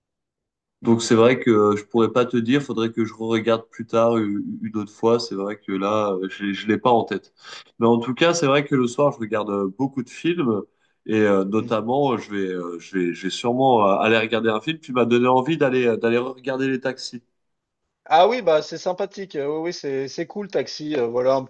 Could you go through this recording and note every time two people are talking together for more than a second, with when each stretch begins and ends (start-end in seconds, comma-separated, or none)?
none